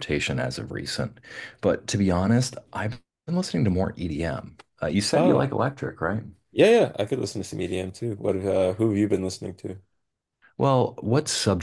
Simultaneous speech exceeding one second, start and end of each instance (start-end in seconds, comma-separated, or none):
none